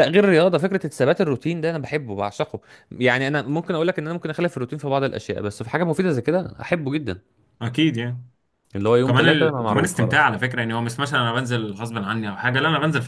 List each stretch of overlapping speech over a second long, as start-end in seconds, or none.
9.0-10.3